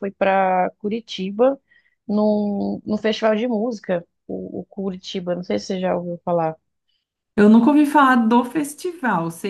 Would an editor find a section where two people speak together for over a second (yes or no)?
no